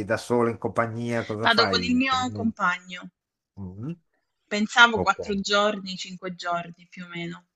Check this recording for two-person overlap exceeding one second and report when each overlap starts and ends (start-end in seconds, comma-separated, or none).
none